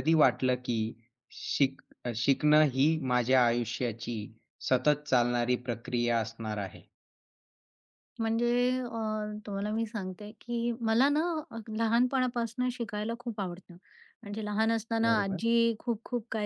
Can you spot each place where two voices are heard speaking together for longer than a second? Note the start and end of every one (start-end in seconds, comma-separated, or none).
none